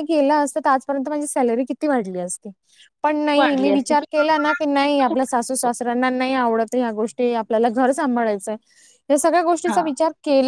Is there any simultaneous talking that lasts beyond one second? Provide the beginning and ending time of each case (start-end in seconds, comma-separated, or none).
3.4-5.7